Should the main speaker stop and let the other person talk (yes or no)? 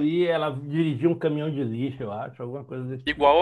yes